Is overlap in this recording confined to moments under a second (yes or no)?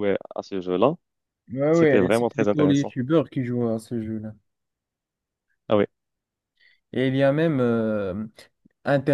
no